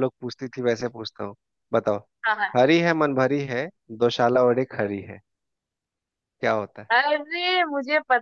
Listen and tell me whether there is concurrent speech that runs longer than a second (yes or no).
no